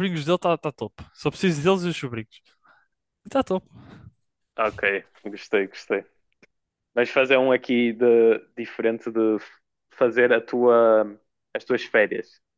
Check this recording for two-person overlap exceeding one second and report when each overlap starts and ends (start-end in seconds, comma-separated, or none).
none